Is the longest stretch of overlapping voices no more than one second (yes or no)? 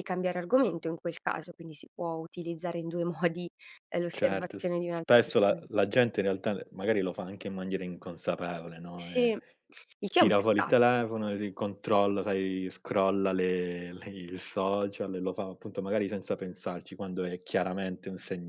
no